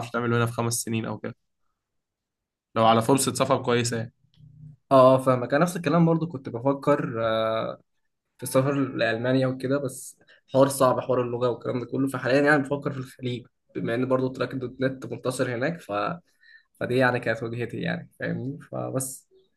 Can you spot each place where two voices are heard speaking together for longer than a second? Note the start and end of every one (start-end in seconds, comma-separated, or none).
none